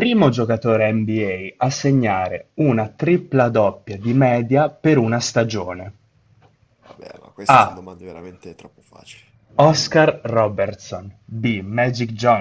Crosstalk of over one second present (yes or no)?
no